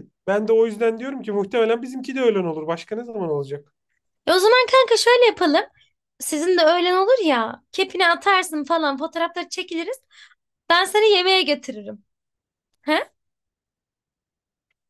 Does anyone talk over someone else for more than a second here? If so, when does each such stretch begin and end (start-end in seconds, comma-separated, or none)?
none